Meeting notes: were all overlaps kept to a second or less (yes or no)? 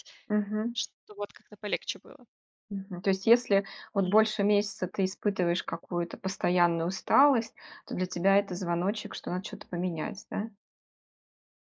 yes